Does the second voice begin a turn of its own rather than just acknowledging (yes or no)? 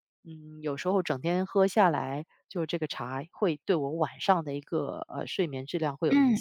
yes